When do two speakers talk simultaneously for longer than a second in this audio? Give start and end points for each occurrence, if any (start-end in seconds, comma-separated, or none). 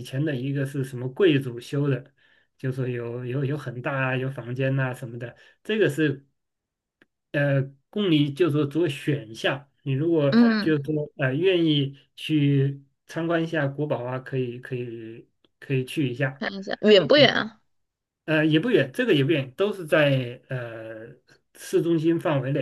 none